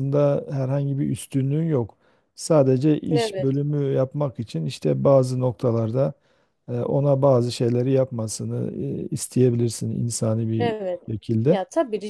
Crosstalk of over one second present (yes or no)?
no